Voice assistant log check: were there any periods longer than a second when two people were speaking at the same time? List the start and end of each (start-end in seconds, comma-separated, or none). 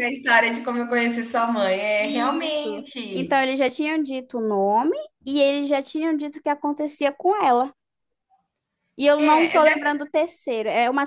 2.0-3.4